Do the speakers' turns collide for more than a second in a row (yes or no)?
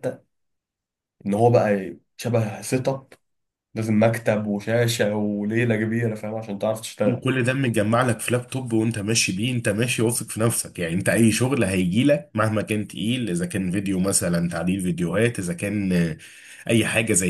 no